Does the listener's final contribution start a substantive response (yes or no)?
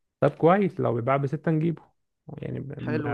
no